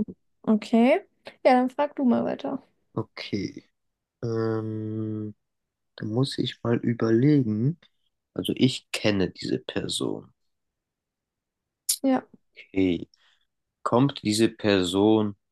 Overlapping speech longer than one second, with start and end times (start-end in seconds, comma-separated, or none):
none